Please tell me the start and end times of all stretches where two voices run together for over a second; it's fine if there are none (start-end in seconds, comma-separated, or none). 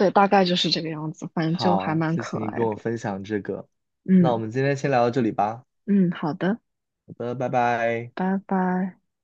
1.4-2.8